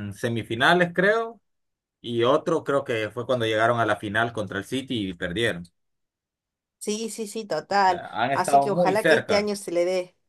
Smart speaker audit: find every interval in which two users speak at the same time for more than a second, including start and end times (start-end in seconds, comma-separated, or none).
7.8-9.5